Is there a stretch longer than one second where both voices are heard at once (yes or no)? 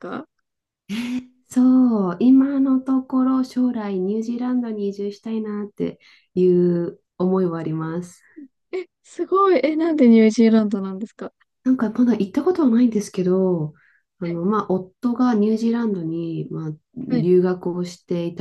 no